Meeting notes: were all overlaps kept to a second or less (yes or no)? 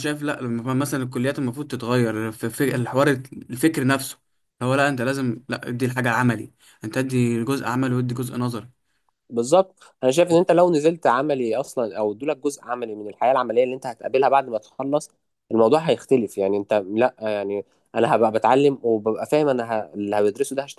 yes